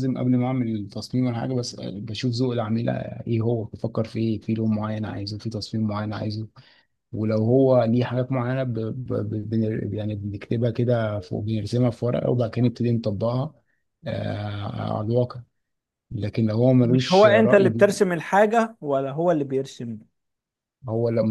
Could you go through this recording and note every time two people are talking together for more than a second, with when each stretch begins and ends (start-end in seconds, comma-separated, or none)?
16.8-18.0